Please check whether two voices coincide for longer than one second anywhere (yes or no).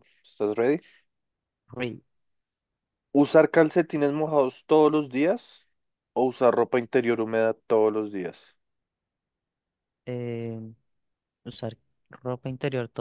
no